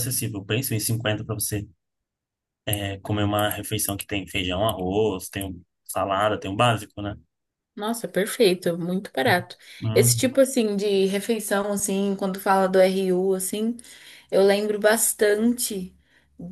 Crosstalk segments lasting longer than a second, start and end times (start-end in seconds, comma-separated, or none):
none